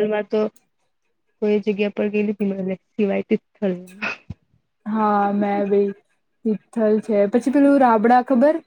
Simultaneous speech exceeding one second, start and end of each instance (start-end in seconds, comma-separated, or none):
none